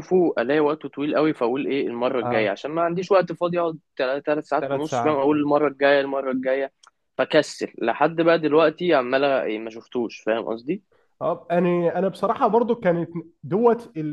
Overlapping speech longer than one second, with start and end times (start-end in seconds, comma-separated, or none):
none